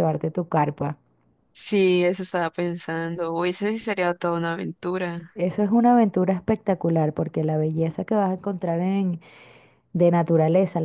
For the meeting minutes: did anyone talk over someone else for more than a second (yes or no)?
no